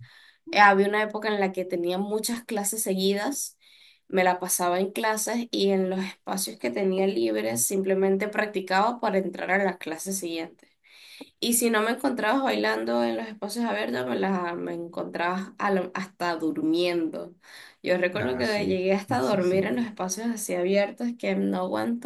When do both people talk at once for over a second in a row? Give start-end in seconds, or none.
18.1-19.6